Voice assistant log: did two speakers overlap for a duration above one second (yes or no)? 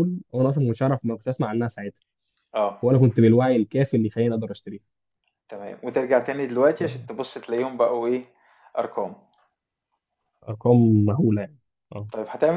no